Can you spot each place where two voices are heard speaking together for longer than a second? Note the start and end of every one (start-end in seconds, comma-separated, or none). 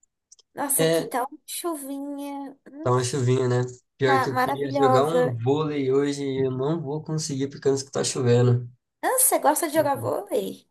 4.0-5.4